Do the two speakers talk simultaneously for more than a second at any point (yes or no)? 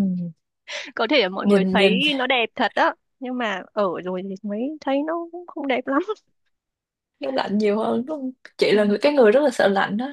no